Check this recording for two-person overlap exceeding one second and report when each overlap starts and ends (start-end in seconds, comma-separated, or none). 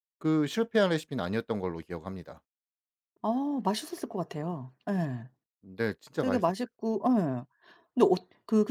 none